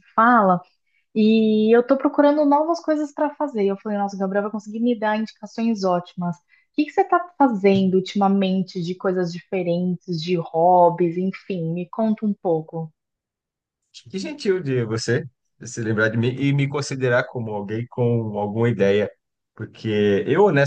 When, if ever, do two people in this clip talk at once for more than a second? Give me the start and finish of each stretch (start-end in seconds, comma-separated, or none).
none